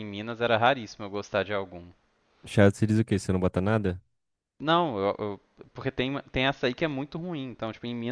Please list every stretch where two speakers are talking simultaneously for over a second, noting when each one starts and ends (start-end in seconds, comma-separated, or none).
none